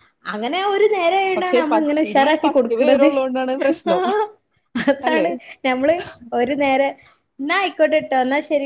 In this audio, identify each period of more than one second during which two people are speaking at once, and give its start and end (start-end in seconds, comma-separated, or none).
1.4-3.1